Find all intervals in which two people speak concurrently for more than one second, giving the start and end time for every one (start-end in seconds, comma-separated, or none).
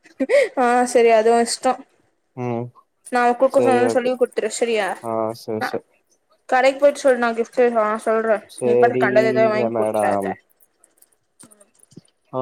8.6-10.3